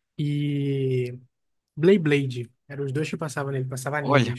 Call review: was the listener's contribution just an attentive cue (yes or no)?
no